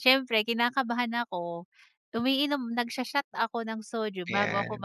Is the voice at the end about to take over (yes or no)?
no